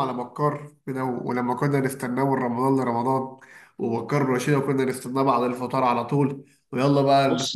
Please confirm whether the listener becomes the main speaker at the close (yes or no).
no